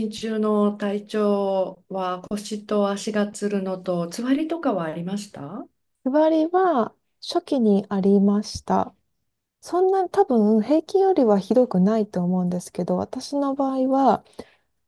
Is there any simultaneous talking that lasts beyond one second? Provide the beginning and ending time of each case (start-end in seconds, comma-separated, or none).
none